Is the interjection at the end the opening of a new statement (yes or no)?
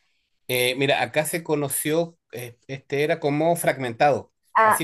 no